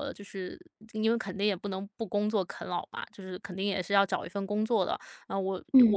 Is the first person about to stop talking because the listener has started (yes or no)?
no